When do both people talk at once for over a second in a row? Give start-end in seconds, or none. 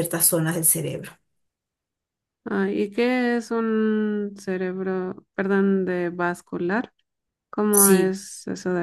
none